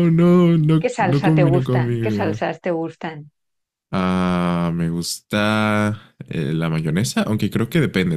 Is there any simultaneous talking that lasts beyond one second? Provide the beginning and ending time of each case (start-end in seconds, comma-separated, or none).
0.8-2.4